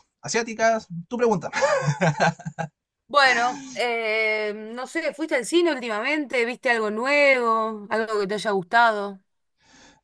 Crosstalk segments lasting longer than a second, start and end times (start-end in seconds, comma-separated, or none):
none